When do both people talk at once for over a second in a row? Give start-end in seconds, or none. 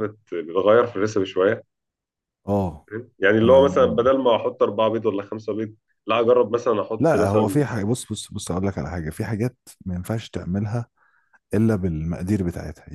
none